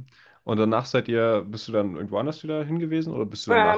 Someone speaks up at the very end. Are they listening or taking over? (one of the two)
taking over